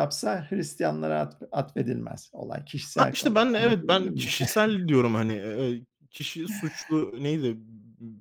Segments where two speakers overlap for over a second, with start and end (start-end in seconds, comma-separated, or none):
2.8-4.3